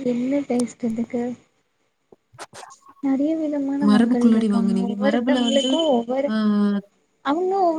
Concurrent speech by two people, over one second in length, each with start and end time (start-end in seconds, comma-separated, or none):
3.9-5.7